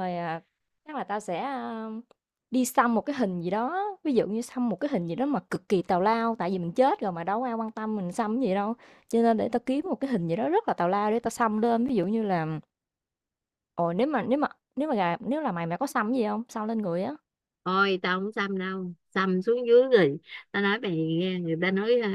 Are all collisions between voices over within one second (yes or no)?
yes